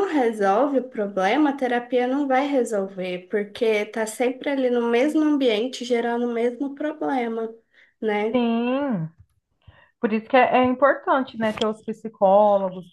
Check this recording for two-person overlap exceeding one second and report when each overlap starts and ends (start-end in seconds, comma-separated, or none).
none